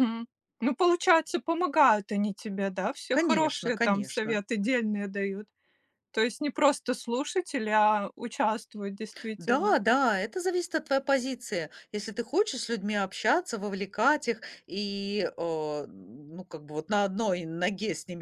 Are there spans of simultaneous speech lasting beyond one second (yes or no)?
yes